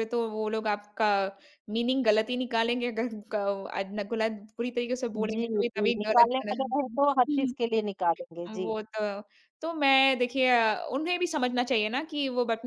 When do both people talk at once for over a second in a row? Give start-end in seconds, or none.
5.2-7.0